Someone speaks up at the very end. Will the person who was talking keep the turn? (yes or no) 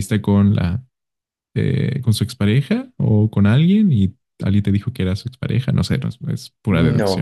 no